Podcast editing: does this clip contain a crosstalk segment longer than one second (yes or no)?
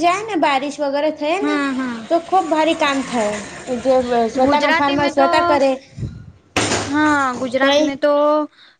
no